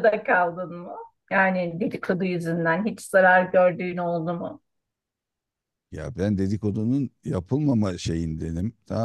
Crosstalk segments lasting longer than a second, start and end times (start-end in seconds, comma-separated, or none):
none